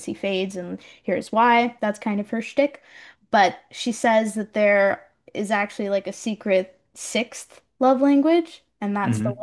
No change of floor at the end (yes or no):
yes